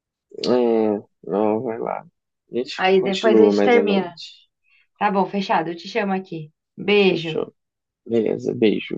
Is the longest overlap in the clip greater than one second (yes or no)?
yes